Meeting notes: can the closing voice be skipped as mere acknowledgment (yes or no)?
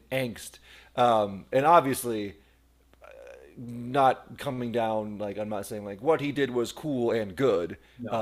yes